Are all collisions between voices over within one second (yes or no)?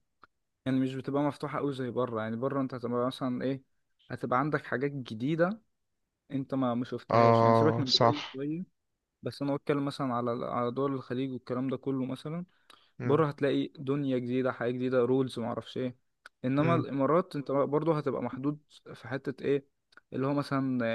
no